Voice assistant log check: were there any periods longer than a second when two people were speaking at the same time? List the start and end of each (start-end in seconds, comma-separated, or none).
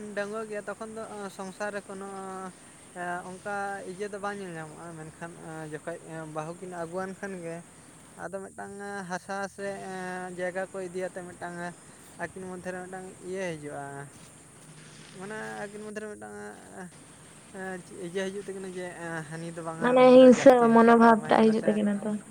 19.8-21.7